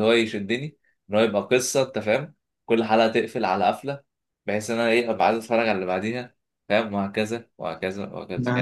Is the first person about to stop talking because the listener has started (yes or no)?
yes